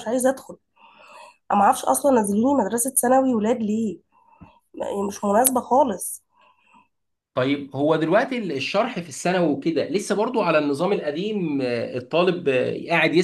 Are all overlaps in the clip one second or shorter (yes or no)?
yes